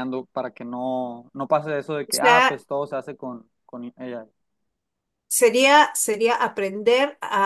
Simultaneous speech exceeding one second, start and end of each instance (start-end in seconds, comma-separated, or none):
none